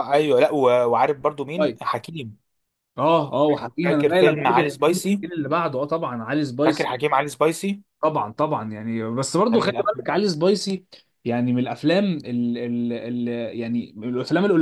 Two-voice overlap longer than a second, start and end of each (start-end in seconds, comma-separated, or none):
3.8-5.2